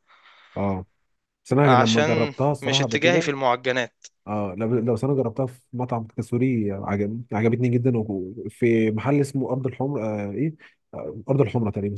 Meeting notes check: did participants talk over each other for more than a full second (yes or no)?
yes